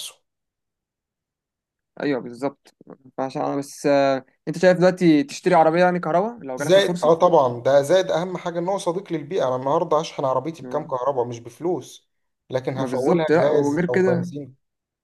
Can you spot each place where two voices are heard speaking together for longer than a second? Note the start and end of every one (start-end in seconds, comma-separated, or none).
12.7-14.3